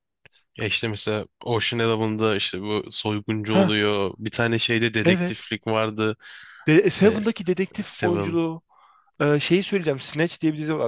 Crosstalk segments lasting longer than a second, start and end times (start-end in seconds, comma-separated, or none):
none